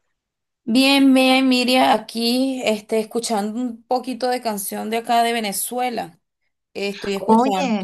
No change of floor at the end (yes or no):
yes